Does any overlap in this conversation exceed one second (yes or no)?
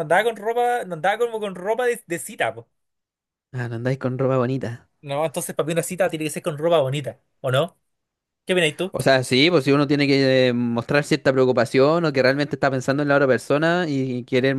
no